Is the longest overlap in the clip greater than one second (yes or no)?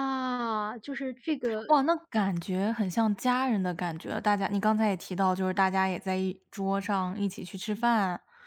no